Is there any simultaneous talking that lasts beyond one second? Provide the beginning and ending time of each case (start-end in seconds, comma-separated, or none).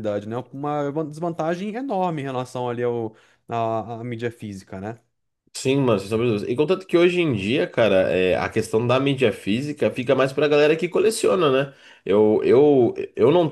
none